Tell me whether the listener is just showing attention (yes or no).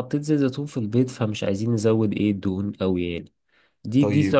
yes